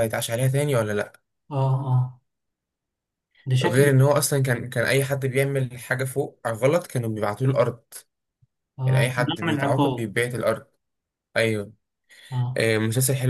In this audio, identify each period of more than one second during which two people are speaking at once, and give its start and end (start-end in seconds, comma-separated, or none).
8.8-10.1